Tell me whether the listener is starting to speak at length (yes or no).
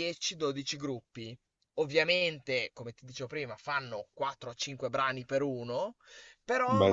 no